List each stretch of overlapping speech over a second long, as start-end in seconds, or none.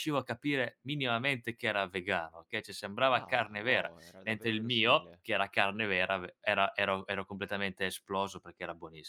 3.1-5.2